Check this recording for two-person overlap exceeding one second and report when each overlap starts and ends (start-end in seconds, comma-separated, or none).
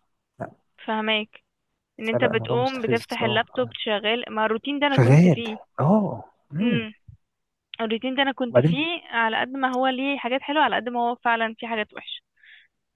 2.0-3.7